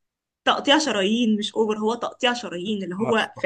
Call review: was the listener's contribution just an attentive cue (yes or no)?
yes